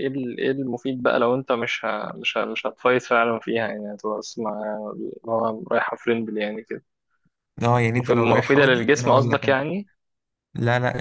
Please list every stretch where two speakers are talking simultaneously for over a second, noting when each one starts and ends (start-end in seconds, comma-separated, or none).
8.0-9.6